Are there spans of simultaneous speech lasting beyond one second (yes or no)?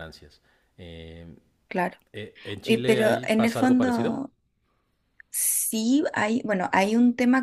yes